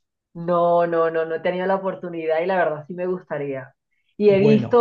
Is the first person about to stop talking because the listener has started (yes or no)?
no